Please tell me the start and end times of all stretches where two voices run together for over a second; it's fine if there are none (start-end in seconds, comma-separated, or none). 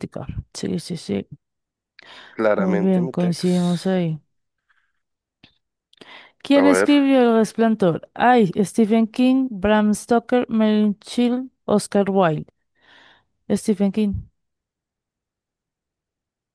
2.6-3.8